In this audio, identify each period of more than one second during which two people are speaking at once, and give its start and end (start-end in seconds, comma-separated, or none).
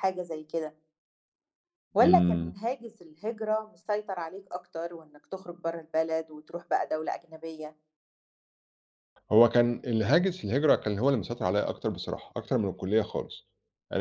none